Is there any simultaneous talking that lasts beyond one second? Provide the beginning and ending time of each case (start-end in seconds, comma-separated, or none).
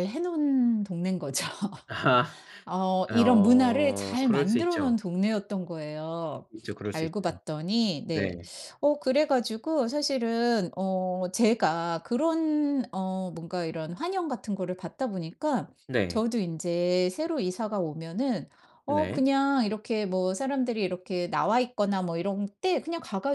3.1-5.0